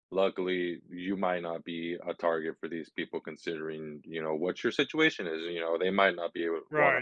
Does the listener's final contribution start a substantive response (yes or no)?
yes